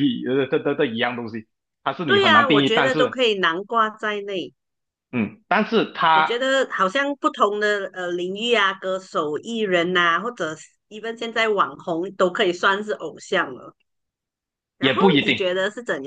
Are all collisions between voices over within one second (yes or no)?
no